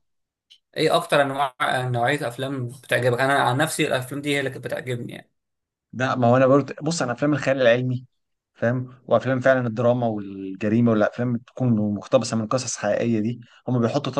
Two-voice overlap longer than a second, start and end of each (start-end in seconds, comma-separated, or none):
none